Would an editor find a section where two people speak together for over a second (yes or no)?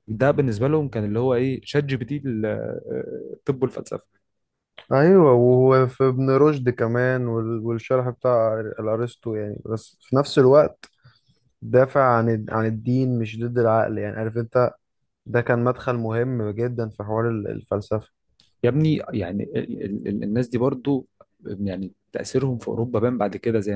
no